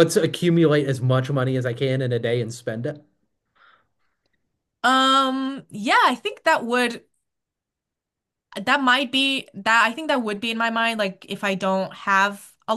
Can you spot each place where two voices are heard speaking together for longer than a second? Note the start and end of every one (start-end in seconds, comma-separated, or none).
none